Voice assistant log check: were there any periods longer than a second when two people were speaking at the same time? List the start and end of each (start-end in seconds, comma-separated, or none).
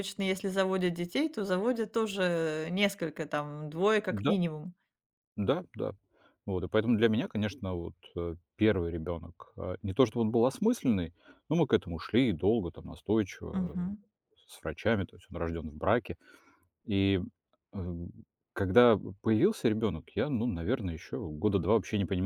none